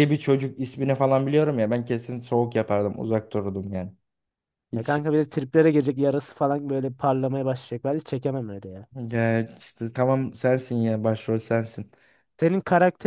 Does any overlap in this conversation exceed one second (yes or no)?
no